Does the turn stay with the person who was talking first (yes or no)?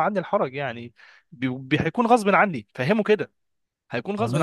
no